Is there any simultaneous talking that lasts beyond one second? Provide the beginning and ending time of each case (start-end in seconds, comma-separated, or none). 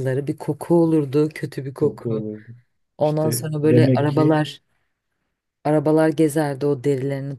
3.0-4.4